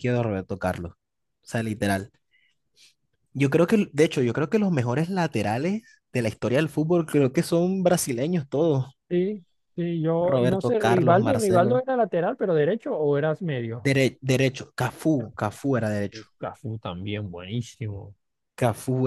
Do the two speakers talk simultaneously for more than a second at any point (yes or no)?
yes